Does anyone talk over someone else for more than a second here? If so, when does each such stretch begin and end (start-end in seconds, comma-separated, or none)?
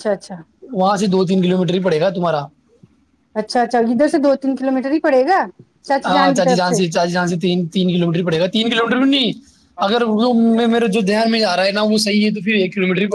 none